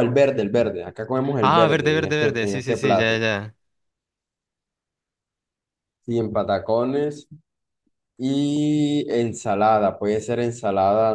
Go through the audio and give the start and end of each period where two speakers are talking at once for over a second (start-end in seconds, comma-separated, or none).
1.4-3.2